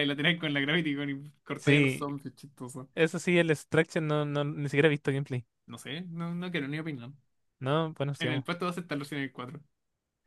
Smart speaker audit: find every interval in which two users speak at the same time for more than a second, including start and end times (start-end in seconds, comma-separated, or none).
none